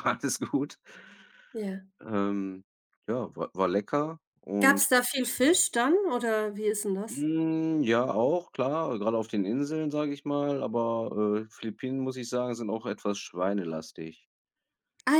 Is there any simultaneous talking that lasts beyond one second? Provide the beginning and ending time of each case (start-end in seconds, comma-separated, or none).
none